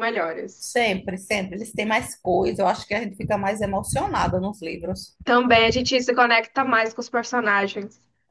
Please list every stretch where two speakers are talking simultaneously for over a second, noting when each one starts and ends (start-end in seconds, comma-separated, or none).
none